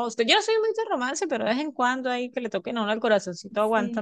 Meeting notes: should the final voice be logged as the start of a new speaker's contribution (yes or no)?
no